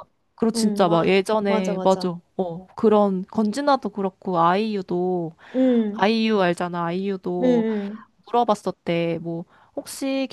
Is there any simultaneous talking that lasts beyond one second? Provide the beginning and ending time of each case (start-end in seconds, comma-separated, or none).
0.6-2.1